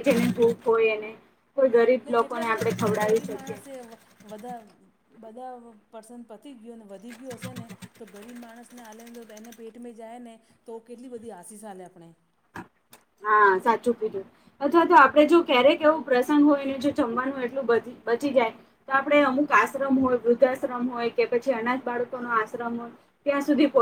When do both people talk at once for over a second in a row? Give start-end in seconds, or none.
2.2-3.5